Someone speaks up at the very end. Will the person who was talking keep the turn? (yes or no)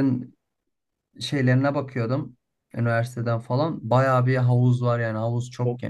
no